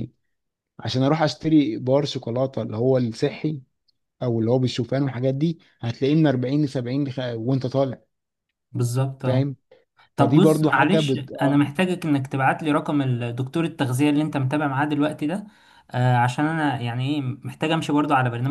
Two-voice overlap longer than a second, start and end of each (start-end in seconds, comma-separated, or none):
10.2-11.6